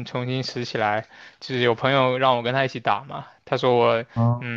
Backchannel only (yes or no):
yes